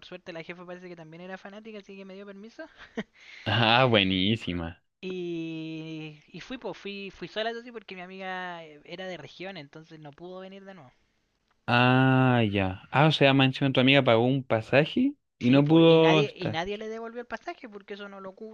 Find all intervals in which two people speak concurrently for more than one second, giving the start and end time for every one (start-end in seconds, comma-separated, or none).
15.4-16.6